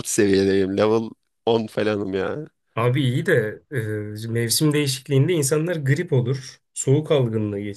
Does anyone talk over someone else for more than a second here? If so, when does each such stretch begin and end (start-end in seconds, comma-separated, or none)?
none